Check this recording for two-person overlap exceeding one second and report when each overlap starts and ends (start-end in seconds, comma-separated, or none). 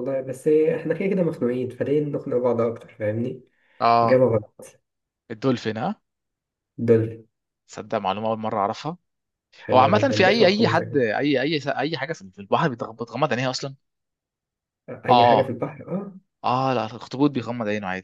9.7-11.0